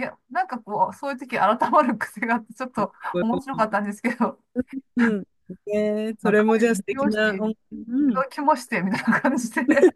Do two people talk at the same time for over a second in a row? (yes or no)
yes